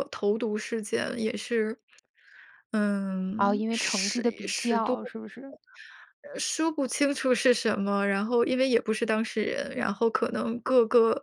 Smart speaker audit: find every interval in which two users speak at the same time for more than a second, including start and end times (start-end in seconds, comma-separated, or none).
3.4-5.0